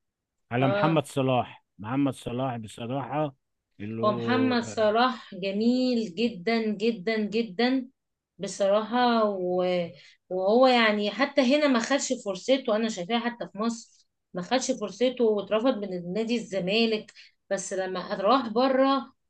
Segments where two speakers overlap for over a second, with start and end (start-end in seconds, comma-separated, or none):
none